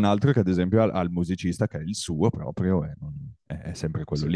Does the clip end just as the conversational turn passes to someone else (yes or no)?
no